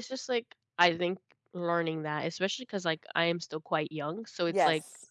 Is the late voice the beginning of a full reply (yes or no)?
no